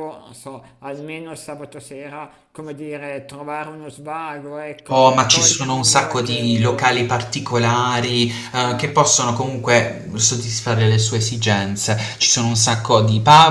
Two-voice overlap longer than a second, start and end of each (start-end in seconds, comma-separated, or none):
4.9-7.0